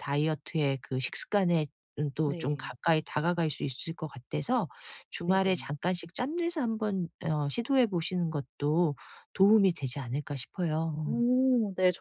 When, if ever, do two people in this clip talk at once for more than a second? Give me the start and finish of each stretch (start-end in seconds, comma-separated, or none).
none